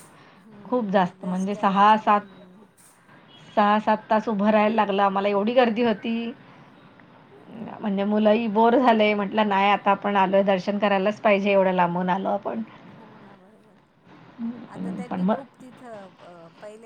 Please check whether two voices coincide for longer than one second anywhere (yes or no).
yes